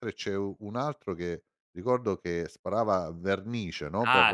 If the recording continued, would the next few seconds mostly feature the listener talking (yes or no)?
yes